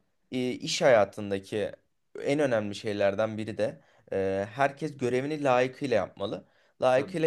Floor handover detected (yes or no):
no